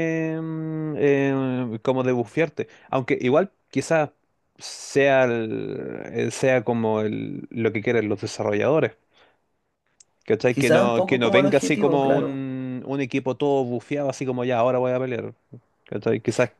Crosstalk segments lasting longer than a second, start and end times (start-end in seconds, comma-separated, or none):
10.5-12.4